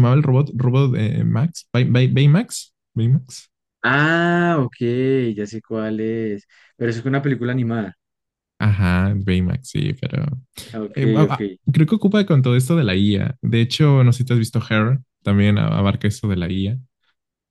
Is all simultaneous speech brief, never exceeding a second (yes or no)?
yes